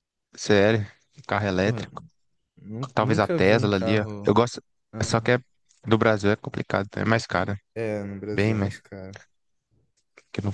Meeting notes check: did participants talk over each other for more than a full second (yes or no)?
yes